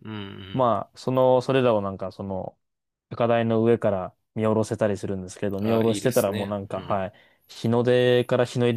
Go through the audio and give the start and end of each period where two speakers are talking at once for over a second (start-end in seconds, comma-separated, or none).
5.6-7.0